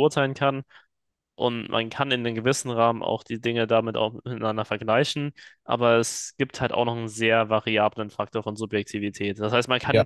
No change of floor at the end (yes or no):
yes